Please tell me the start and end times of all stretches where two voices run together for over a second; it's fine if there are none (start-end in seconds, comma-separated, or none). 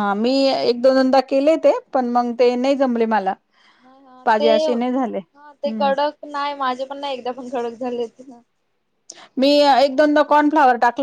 4.2-5.9